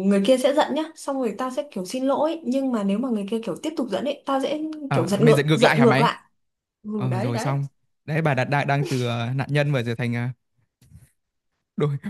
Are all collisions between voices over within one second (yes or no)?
no